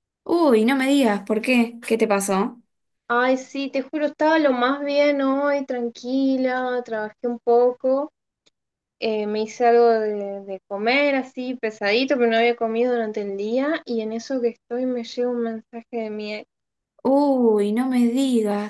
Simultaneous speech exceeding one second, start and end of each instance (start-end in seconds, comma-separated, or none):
none